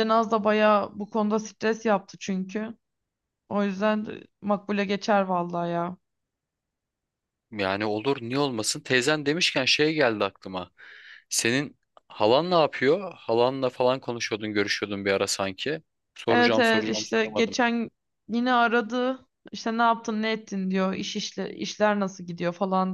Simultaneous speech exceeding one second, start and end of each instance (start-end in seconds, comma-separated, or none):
16.3-17.6